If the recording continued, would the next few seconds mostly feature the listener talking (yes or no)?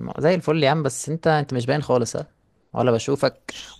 no